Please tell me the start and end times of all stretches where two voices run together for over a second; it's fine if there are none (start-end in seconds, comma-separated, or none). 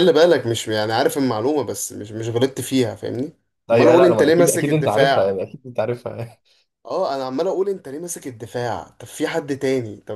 3.7-5.4